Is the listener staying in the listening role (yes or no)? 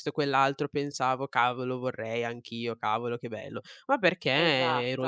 yes